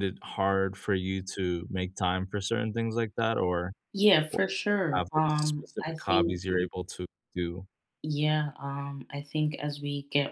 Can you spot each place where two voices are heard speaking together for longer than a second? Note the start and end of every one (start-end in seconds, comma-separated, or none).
4.9-6.4